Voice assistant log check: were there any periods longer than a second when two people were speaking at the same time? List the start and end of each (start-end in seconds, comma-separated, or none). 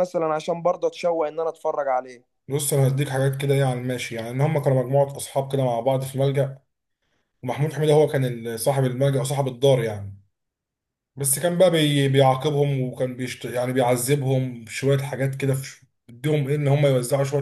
none